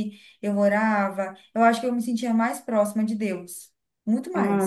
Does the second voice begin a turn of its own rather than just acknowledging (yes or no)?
no